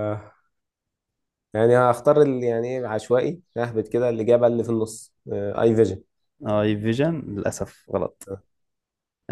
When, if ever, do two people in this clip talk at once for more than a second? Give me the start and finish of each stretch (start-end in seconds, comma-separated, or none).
none